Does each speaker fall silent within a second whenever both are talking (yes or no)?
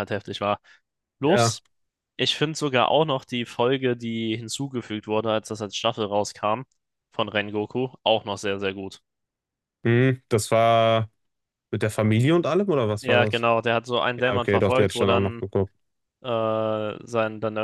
no